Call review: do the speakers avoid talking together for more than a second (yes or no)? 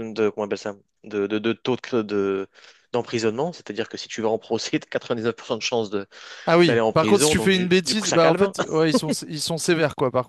no